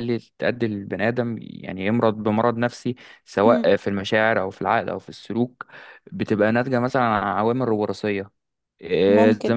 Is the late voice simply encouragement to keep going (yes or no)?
no